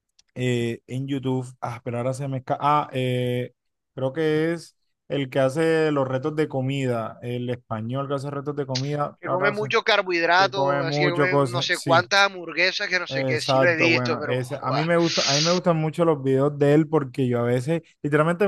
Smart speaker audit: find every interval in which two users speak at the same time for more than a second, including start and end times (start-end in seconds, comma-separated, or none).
10.4-12.1, 13.1-14.9